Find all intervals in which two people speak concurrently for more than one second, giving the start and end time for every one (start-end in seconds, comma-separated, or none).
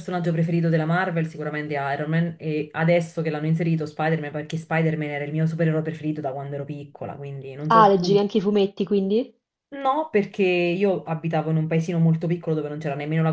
none